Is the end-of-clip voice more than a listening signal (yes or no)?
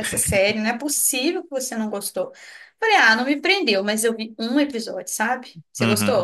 yes